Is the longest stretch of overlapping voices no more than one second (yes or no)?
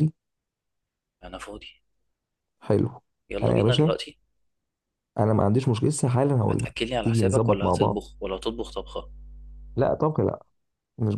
no